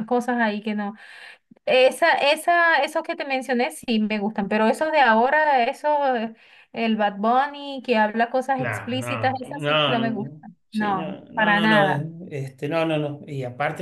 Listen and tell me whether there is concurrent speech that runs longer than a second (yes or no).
yes